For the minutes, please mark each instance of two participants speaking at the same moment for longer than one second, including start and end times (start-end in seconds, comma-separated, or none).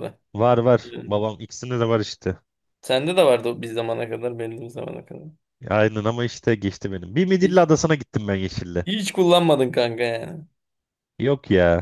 none